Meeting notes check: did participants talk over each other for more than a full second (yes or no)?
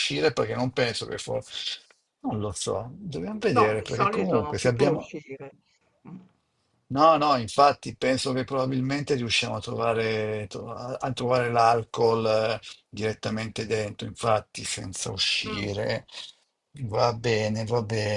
yes